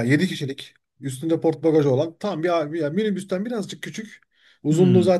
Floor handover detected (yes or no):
no